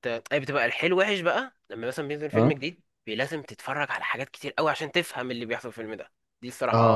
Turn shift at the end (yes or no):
yes